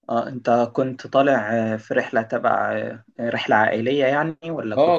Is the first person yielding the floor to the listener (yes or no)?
yes